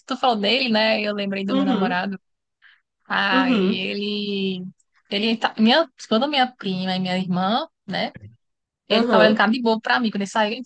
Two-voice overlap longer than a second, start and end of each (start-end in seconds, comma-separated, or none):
none